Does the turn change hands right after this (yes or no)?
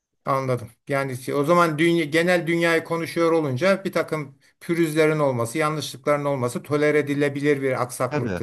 yes